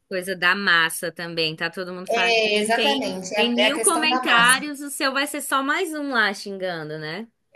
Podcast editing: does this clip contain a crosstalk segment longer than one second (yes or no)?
yes